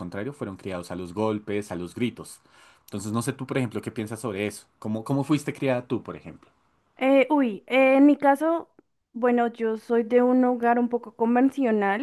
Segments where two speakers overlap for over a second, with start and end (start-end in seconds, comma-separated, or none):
none